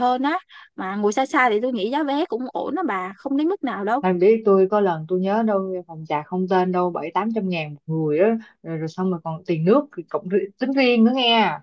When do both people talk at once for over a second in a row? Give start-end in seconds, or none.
none